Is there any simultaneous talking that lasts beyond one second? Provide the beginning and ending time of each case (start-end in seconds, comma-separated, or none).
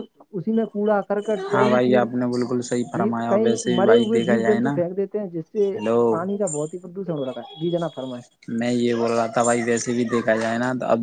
2.9-4.7